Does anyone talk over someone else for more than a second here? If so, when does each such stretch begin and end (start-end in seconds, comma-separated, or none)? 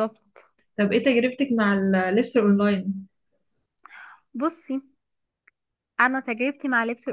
none